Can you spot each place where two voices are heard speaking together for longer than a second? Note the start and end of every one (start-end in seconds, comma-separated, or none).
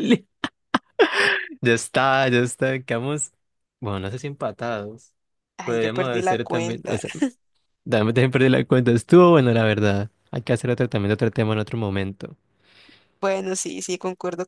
5.6-7.0